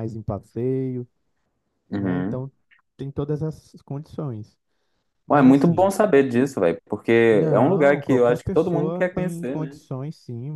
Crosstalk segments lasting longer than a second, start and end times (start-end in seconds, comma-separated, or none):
7.5-9.8